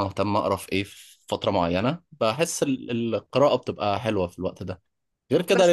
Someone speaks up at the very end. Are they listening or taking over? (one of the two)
listening